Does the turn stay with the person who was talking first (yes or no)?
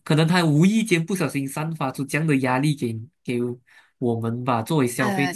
yes